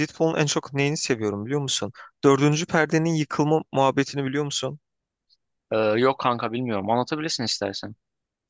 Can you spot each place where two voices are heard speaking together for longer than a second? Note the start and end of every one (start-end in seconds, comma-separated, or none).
none